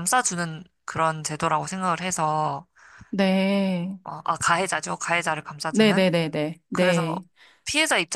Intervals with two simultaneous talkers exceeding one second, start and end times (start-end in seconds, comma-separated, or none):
none